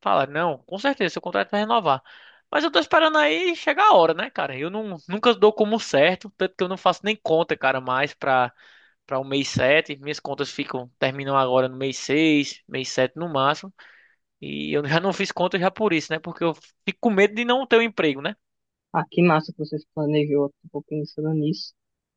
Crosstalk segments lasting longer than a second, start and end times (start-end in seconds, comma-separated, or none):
none